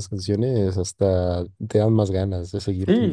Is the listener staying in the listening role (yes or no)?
no